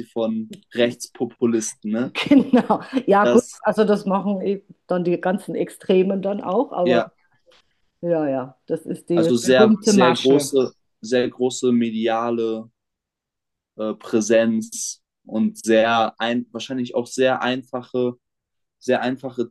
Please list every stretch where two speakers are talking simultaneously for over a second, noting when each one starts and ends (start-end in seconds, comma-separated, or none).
9.1-10.5